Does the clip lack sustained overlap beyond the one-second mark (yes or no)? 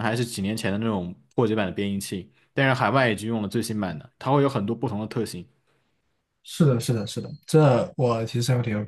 yes